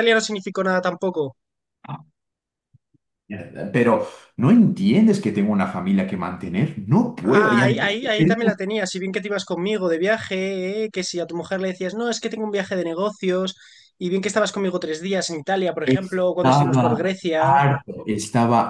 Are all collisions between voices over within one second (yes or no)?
no